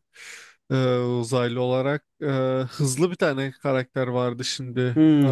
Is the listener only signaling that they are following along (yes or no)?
no